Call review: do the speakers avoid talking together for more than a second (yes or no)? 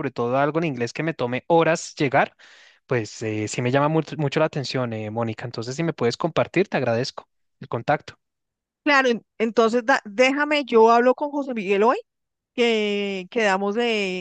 yes